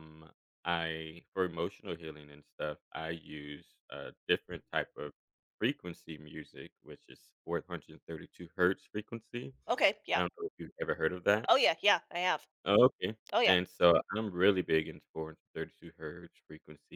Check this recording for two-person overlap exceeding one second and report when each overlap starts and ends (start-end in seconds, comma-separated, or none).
none